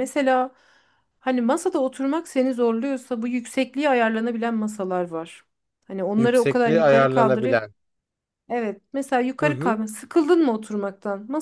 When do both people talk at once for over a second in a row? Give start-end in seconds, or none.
6.2-7.7